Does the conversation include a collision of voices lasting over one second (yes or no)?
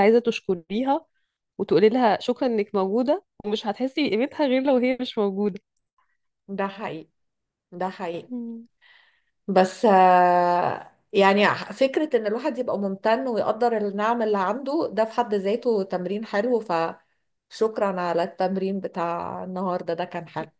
no